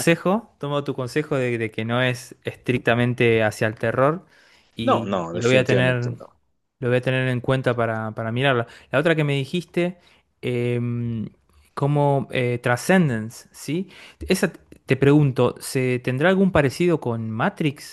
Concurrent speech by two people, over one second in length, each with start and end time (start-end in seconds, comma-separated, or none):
4.8-6.1